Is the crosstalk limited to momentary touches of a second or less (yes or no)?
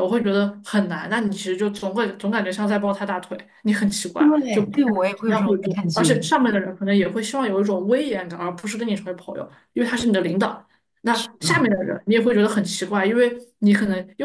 no